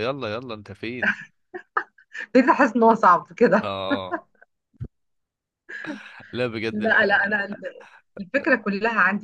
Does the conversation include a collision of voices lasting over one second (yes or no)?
no